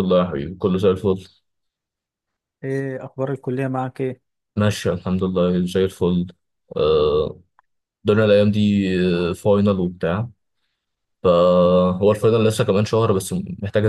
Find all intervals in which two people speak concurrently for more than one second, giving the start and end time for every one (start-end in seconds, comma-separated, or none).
none